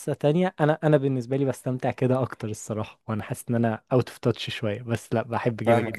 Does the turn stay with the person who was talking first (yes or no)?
no